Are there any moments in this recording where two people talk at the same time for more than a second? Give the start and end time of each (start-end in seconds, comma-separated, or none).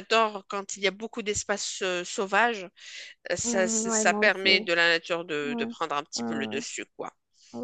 3.5-4.7